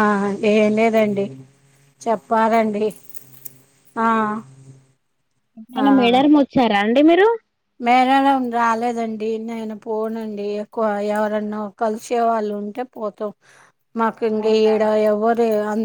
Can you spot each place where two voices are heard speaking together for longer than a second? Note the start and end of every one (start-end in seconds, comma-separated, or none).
none